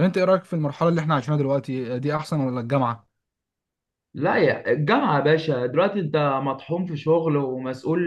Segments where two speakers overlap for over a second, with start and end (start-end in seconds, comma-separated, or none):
none